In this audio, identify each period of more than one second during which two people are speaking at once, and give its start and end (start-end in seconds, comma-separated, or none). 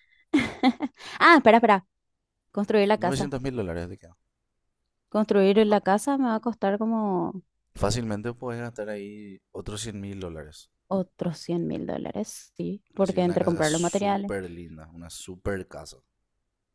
13.0-14.3